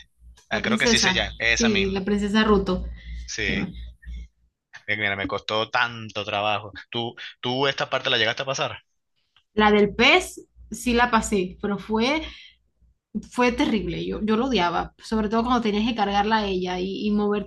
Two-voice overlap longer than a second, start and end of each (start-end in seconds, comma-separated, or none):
0.5-2.0